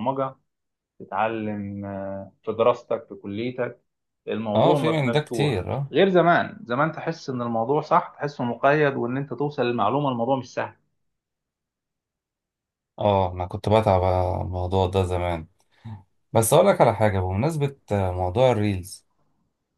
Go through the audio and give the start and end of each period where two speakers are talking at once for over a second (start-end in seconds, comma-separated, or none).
4.5-6.0